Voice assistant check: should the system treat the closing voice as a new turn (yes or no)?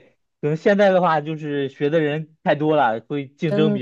yes